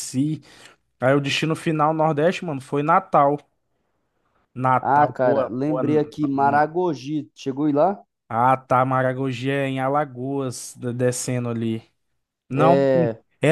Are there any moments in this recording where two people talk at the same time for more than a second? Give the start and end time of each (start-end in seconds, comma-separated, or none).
4.8-6.6